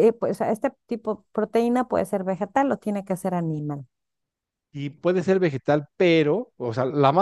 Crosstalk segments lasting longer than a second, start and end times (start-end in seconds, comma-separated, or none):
none